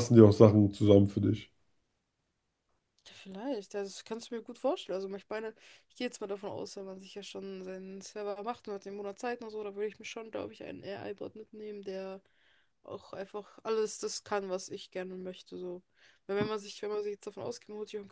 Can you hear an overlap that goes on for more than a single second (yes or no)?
no